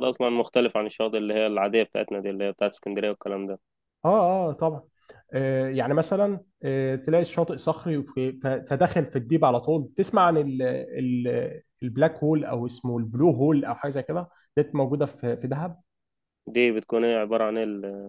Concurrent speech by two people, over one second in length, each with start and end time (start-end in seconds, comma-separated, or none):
none